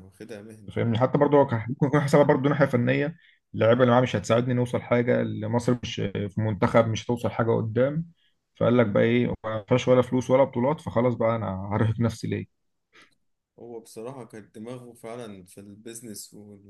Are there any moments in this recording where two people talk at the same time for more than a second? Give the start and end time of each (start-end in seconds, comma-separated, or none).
none